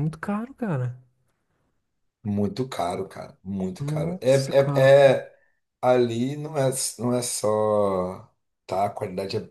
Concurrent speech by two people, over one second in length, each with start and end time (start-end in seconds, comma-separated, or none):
3.8-5.1